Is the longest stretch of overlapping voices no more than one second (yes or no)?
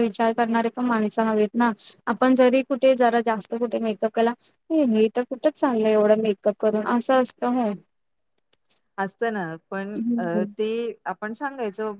yes